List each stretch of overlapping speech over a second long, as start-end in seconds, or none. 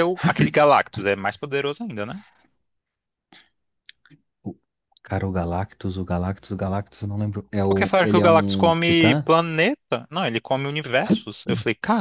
7.7-9.3